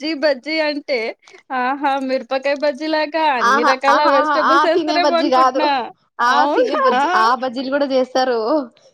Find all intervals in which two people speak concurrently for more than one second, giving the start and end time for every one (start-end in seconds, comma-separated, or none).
3.5-5.6